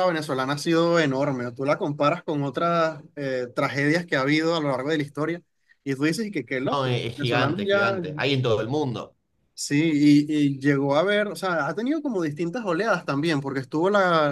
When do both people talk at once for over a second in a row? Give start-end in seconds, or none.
6.7-8.0